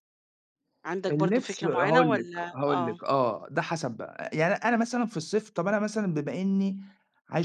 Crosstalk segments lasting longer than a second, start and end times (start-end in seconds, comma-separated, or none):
1.1-3.0